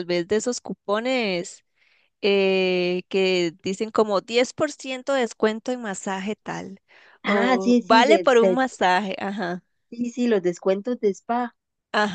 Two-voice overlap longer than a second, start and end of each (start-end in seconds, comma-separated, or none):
7.2-8.6